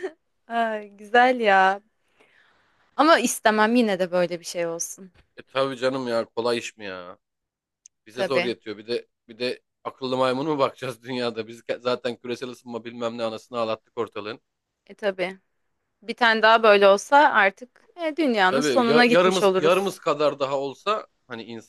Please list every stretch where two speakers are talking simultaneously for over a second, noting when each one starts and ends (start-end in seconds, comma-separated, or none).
18.5-19.9